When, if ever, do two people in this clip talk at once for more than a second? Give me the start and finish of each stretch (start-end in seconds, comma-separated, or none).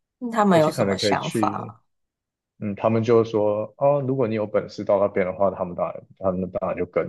0.5-1.7